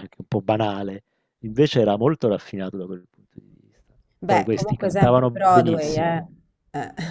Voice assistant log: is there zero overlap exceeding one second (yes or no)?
no